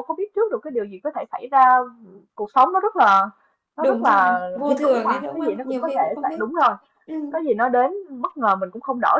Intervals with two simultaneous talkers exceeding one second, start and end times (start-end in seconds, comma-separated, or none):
3.8-6.4